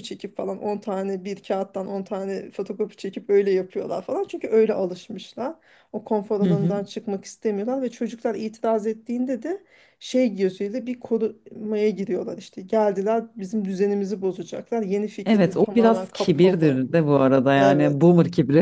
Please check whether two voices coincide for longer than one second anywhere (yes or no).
yes